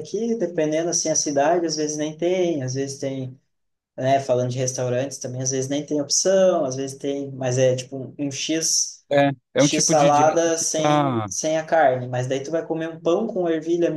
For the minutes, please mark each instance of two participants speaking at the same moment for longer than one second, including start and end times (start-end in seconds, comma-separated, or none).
9.6-11.3